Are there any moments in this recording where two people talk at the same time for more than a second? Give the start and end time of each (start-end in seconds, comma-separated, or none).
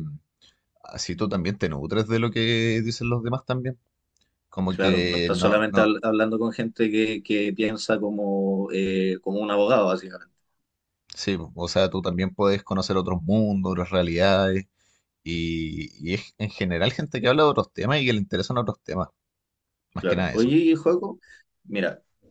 4.7-5.9